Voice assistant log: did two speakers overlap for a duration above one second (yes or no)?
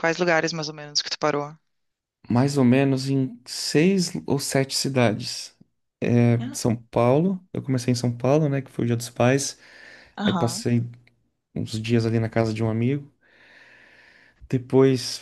no